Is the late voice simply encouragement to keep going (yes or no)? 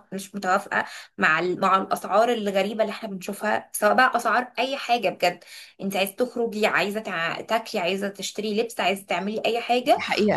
no